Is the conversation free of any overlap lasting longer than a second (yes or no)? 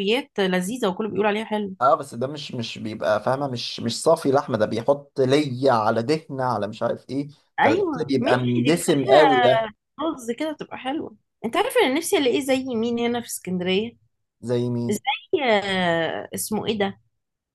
no